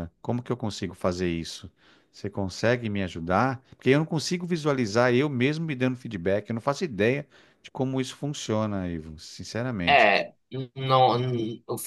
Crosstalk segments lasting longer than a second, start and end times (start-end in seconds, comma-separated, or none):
none